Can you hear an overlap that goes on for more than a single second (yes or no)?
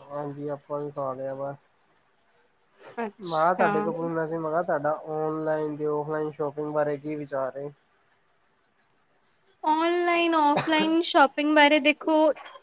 no